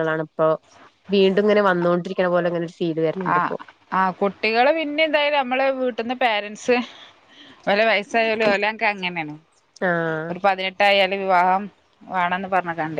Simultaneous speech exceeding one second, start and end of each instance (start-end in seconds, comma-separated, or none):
none